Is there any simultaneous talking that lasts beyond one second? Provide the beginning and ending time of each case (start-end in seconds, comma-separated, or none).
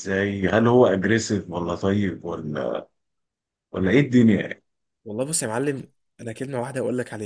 none